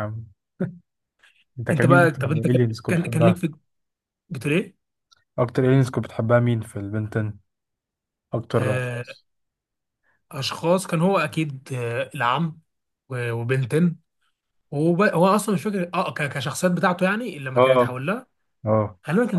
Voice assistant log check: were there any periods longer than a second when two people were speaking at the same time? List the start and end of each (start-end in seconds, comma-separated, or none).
1.7-3.4